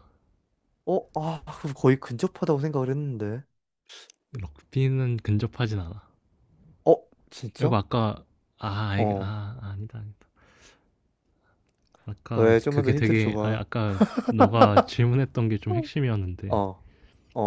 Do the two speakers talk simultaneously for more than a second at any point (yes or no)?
yes